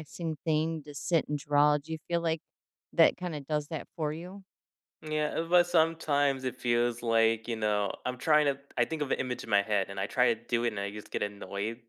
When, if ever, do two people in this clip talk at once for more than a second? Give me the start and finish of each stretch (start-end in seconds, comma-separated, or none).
none